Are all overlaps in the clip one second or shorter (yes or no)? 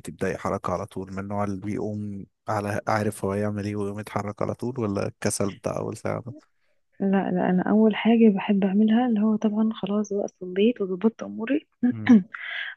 yes